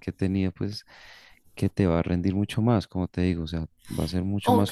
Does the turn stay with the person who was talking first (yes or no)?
no